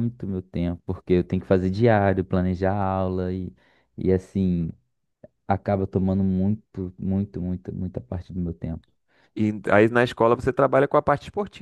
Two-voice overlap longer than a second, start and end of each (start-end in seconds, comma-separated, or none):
none